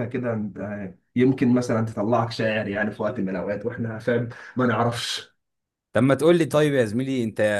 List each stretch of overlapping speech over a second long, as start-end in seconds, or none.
none